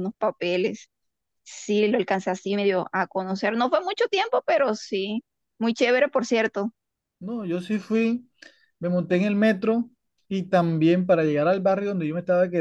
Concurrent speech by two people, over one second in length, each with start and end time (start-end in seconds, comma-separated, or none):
none